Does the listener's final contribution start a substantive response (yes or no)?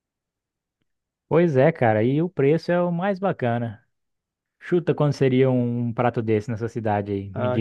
yes